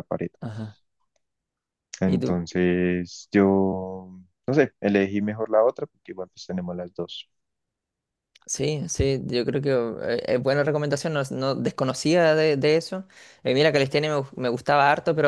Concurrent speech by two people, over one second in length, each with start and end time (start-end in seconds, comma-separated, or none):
none